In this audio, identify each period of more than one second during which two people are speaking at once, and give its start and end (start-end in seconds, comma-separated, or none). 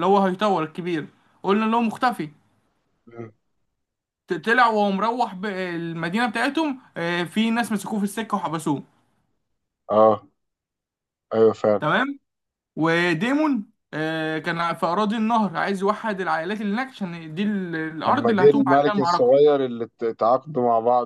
18.1-19.4